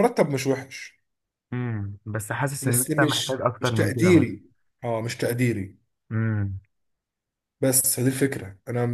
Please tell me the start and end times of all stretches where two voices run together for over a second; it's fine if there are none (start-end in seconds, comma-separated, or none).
2.7-4.3